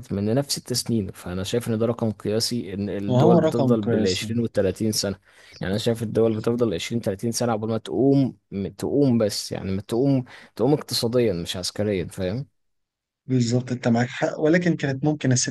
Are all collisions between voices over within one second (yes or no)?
no